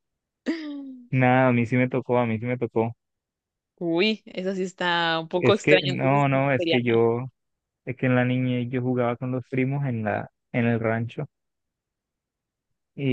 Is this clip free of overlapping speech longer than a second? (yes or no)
no